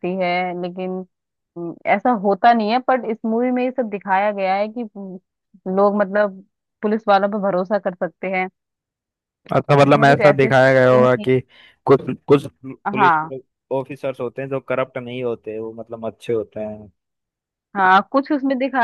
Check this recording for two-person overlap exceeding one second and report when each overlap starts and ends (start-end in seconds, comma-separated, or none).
9.8-11.3